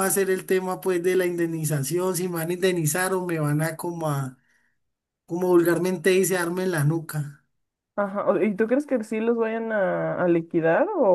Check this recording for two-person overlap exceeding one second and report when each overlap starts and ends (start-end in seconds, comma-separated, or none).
none